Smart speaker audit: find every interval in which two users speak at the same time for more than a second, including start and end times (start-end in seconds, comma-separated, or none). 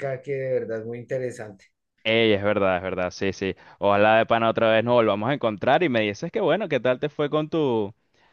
none